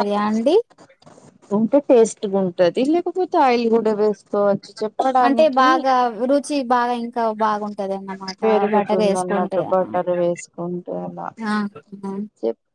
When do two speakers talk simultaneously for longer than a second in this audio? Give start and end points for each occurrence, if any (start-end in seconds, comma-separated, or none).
none